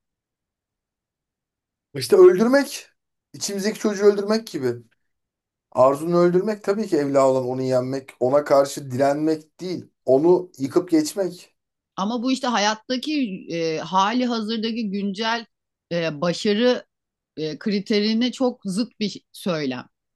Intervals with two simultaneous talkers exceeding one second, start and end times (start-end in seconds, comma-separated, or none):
none